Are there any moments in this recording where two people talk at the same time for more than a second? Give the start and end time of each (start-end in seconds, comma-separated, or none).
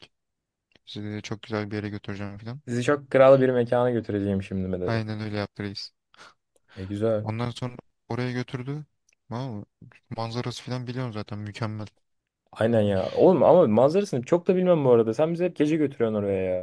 none